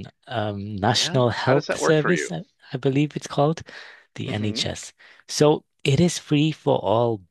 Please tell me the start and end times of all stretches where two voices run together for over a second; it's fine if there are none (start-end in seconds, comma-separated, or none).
0.9-2.3